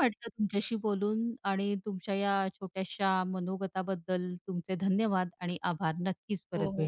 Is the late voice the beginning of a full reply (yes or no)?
yes